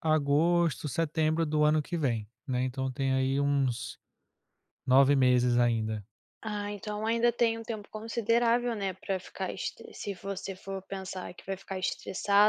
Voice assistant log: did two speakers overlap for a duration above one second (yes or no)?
no